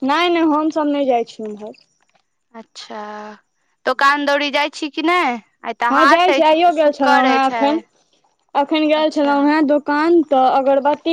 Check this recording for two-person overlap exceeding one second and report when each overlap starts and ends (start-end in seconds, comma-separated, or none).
5.9-7.8